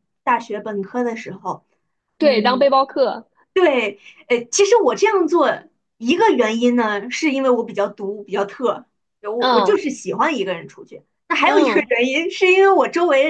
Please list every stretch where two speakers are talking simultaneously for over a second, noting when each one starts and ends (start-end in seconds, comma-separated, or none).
none